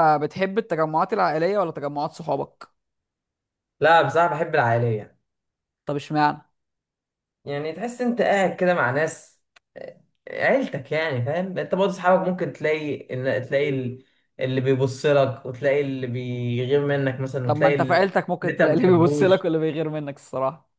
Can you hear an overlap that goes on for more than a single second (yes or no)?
yes